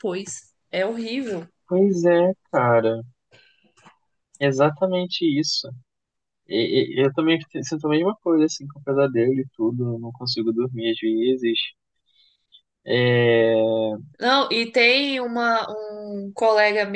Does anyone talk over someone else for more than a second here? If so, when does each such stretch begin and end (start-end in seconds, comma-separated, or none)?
none